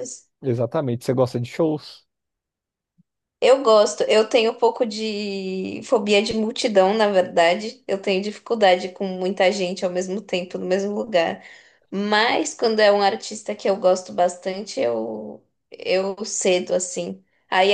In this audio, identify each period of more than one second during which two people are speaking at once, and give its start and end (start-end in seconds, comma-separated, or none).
none